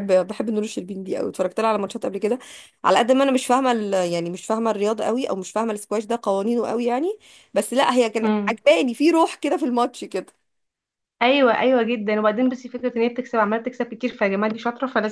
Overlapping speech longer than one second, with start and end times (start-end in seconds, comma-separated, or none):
none